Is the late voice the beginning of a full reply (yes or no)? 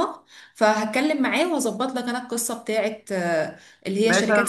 yes